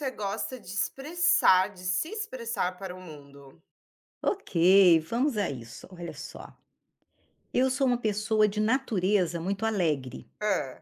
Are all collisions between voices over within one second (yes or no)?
yes